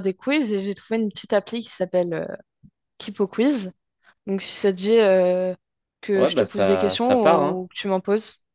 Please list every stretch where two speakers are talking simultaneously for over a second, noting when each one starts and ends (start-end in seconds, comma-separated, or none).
6.2-7.7